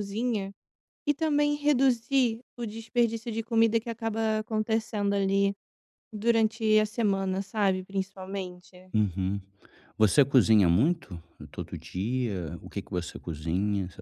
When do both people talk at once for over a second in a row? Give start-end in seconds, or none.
none